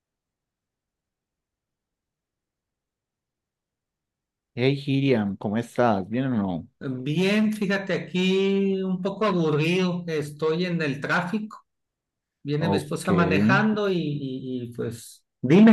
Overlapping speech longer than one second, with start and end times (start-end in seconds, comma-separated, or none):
none